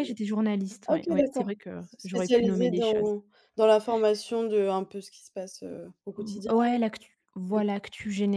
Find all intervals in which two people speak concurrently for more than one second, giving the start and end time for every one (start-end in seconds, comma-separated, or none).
0.8-3.1